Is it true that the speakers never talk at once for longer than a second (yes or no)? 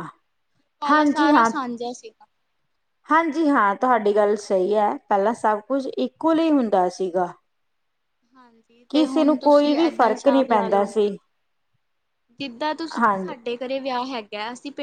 no